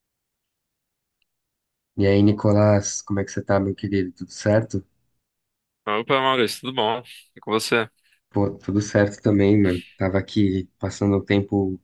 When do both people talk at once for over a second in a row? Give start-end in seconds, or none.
none